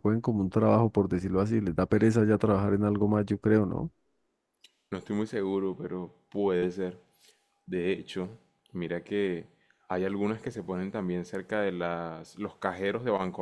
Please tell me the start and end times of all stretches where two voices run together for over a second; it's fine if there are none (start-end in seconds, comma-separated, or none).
none